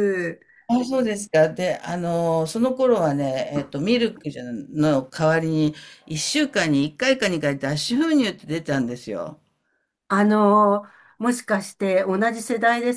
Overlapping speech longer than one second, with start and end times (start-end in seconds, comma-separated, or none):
none